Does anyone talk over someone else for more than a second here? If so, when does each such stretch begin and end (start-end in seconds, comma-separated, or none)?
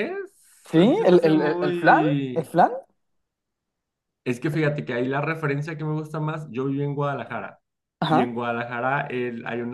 0.7-2.5